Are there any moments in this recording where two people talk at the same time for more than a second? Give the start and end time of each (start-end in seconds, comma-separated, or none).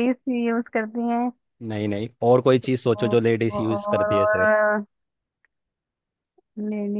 3.0-4.5